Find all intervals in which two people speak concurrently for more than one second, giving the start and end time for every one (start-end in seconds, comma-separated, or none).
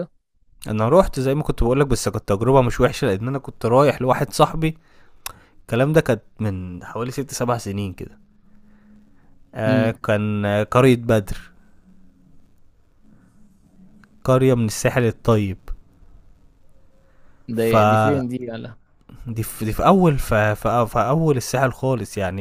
none